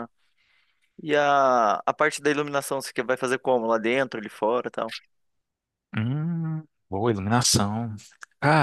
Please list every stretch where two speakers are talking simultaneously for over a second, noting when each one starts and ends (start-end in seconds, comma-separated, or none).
none